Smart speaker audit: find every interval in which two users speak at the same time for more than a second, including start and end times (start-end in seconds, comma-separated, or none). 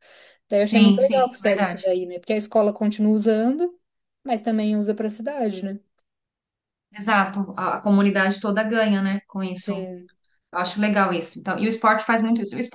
0.6-1.8